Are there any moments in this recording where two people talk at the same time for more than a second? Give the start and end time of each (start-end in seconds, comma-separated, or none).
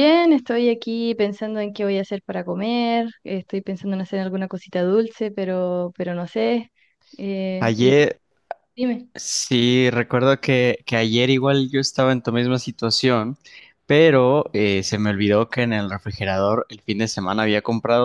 none